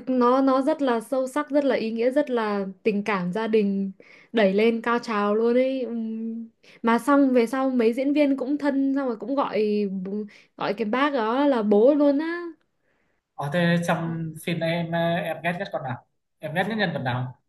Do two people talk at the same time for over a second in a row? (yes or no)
no